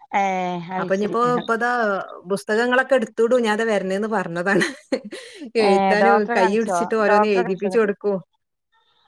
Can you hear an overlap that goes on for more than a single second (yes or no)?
yes